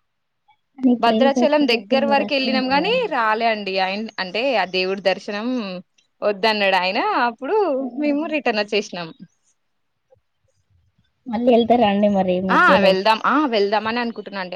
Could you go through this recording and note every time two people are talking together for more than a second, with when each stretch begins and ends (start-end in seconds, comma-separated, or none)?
1.1-3.2